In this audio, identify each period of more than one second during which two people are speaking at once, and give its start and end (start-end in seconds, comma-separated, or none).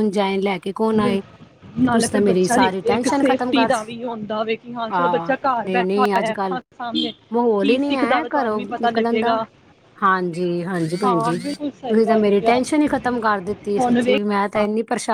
1.8-4.0, 4.9-6.6, 7.6-9.4, 11.0-12.6